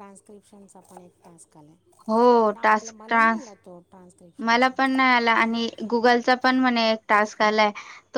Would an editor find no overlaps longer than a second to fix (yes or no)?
no